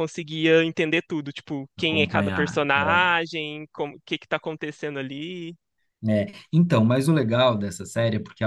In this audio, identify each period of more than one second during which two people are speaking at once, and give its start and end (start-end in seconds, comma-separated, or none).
1.8-3.2